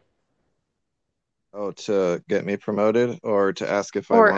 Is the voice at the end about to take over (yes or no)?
yes